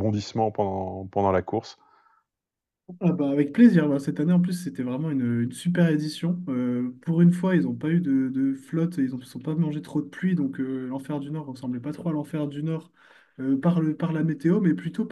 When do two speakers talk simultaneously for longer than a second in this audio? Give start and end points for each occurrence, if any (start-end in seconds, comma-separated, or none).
none